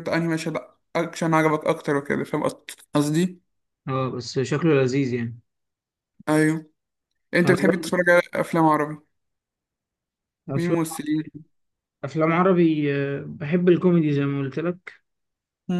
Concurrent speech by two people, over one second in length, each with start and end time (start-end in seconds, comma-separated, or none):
none